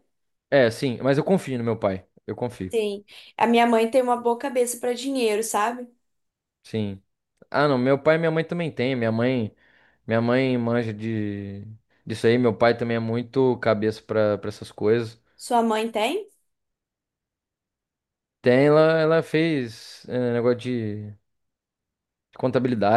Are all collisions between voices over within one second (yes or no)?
yes